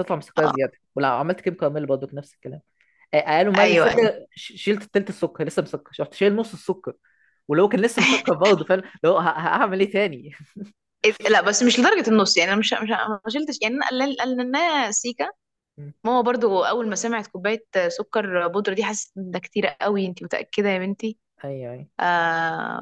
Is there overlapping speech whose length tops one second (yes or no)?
no